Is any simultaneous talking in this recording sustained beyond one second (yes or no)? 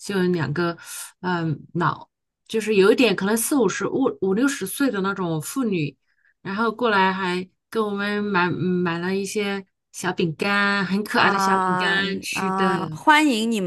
yes